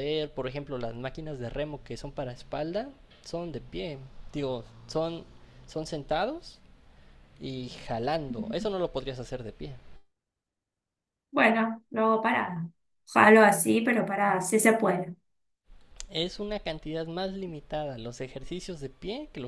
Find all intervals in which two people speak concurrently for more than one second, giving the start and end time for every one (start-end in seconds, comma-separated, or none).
none